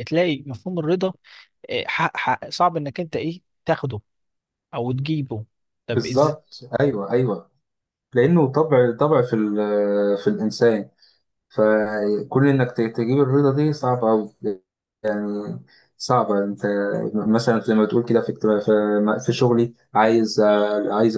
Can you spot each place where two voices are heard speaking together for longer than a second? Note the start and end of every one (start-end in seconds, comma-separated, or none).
none